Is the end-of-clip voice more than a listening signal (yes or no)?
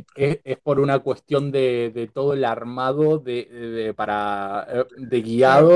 yes